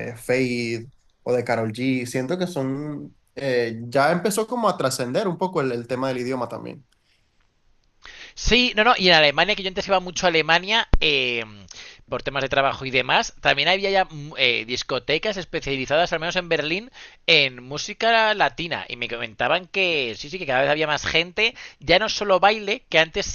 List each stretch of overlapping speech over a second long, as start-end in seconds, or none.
none